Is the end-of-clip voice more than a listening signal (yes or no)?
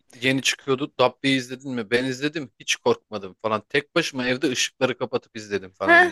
yes